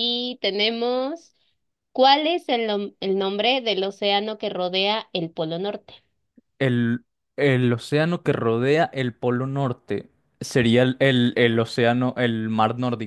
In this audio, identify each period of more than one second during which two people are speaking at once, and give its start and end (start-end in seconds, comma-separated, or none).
none